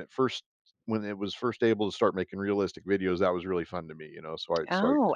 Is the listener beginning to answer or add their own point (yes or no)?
yes